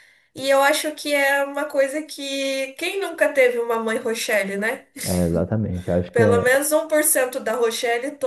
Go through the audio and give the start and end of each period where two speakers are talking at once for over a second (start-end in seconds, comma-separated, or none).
none